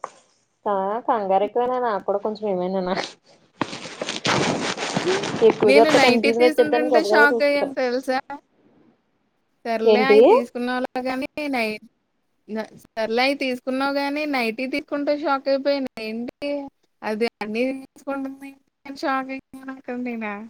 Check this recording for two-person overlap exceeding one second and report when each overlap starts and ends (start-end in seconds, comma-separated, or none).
5.7-7.7